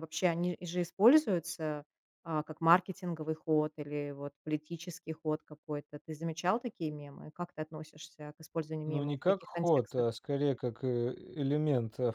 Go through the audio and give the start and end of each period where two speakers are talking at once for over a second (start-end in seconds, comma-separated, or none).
8.8-10.1